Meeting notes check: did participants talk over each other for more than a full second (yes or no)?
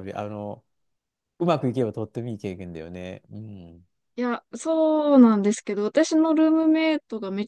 no